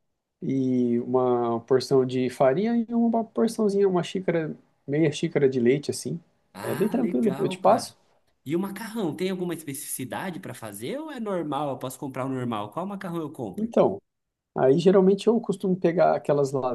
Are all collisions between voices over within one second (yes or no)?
no